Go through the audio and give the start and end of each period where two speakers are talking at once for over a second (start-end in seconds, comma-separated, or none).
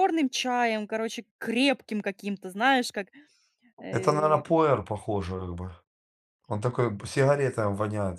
none